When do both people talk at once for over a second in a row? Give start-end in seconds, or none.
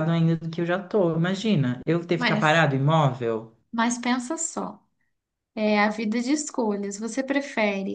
none